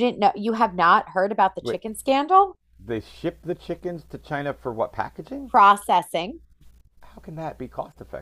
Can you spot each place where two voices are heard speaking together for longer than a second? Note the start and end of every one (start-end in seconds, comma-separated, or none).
none